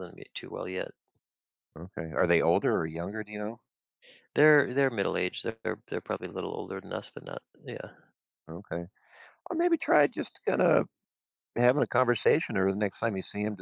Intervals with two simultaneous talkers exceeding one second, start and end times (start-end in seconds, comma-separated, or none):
none